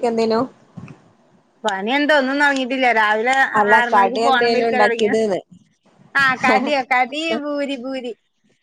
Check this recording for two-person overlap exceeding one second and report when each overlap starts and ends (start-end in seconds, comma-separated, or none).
3.8-5.2